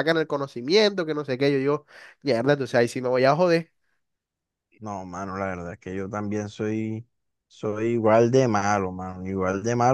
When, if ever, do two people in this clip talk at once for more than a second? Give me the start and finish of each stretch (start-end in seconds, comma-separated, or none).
none